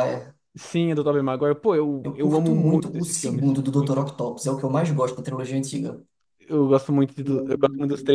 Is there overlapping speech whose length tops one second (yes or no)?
yes